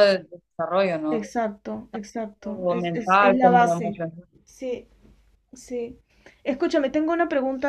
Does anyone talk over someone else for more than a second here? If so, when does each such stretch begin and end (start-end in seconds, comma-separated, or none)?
2.4-4.0